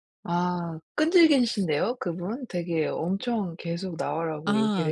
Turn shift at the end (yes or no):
yes